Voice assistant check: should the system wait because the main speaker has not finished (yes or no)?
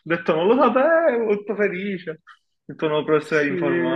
no